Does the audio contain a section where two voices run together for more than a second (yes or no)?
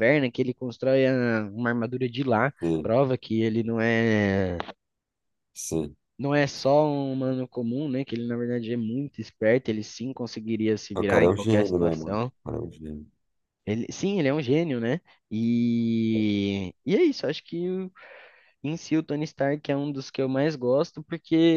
yes